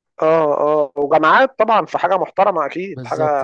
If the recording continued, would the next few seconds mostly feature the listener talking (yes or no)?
no